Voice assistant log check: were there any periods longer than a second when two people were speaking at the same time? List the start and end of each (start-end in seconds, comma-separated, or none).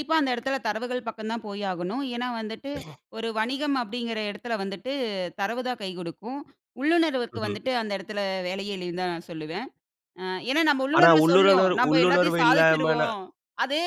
11.0-13.2